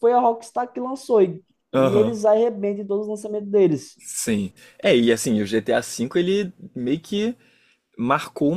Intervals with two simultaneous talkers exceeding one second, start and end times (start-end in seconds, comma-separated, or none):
none